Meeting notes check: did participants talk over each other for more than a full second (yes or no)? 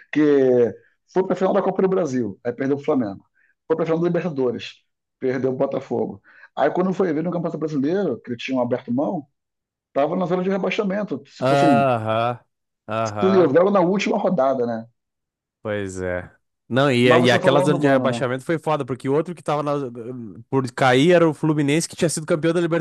yes